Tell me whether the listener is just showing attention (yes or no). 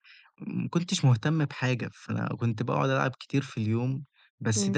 yes